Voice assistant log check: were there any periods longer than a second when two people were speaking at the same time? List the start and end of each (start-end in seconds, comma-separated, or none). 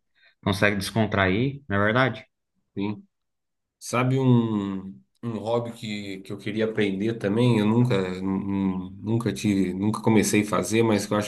none